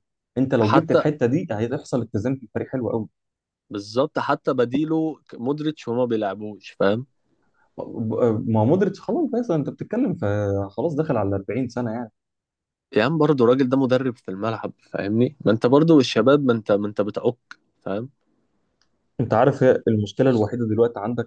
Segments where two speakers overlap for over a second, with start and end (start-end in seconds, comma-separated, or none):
none